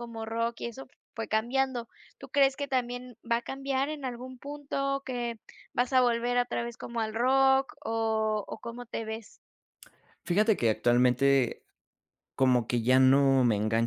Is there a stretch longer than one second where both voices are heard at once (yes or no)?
no